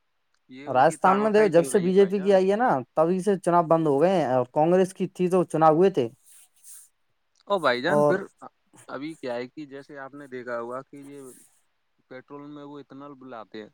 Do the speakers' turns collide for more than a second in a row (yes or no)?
yes